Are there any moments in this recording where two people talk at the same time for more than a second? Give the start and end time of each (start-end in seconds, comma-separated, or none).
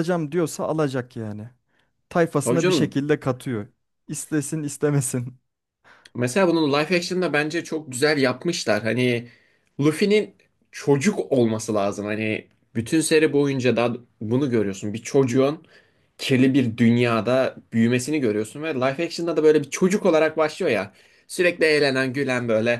none